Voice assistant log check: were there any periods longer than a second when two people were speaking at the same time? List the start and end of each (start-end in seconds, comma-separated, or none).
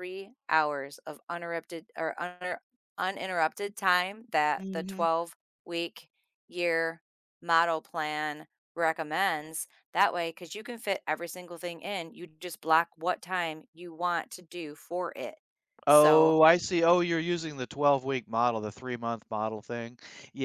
none